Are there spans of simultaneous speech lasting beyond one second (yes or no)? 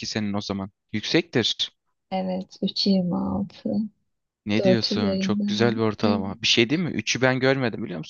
yes